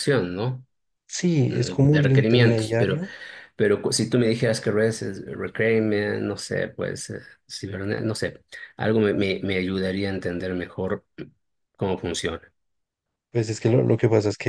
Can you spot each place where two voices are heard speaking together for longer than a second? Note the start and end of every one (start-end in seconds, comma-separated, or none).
1.4-3.0